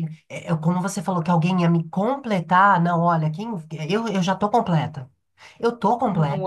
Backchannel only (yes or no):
no